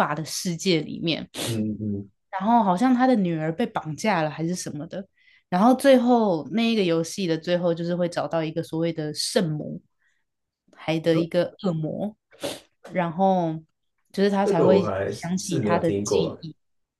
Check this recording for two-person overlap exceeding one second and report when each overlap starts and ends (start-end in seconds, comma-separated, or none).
14.4-16.4